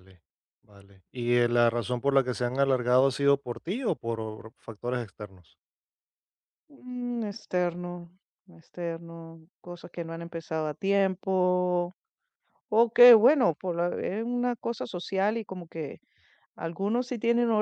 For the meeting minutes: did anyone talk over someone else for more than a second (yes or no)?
no